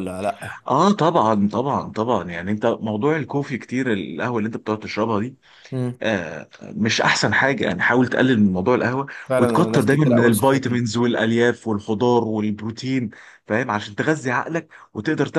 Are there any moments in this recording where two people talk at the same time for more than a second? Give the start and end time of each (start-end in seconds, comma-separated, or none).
9.3-10.8